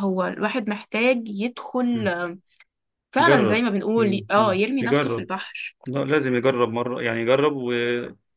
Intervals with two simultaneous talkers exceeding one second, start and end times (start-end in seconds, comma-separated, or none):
3.2-5.3